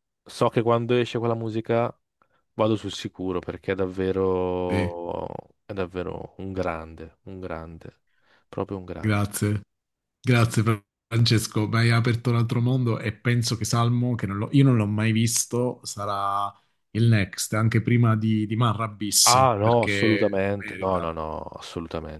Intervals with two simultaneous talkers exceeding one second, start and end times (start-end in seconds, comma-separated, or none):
19.3-21.1